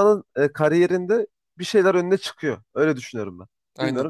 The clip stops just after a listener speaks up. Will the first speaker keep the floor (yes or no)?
no